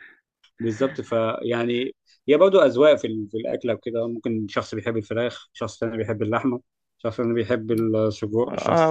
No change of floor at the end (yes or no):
no